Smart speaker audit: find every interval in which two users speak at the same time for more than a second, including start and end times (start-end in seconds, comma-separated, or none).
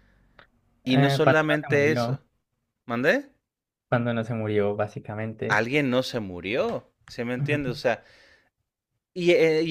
0.8-2.2